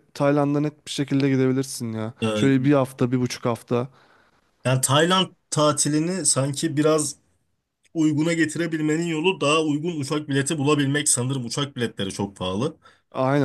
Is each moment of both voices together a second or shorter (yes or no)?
yes